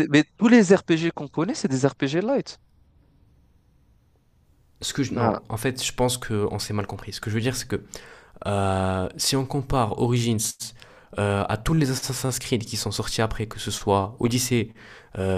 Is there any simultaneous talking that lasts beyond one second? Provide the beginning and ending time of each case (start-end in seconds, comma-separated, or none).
none